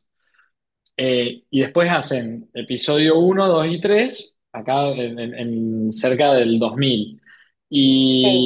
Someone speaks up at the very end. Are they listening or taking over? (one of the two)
listening